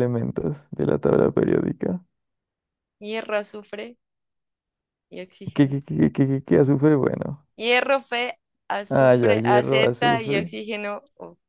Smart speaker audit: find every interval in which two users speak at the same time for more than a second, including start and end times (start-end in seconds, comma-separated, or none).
8.9-10.5